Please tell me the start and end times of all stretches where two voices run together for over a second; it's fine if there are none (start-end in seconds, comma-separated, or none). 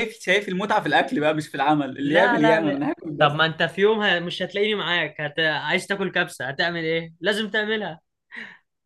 2.0-3.5